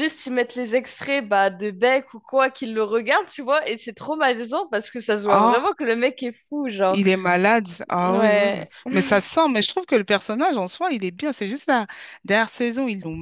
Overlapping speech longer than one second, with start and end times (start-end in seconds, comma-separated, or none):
none